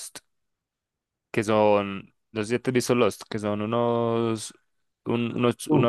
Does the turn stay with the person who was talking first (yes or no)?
yes